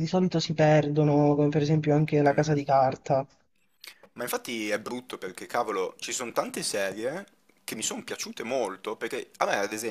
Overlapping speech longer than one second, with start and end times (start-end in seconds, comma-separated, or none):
none